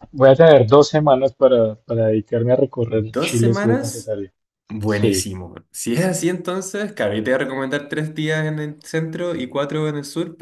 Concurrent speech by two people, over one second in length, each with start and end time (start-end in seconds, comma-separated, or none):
2.9-4.1